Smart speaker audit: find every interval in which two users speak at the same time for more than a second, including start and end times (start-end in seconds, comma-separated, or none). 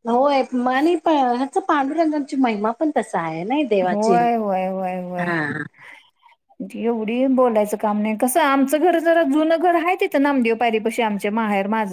none